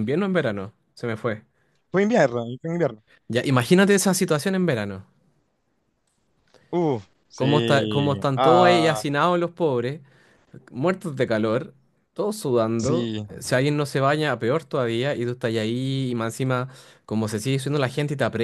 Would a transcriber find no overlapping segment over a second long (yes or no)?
no